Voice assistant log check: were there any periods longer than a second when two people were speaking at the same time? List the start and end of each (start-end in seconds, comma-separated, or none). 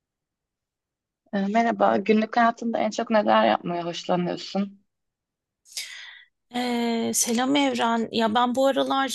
none